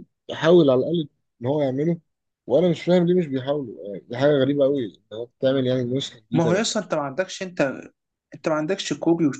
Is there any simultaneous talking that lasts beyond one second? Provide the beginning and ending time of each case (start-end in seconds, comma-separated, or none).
none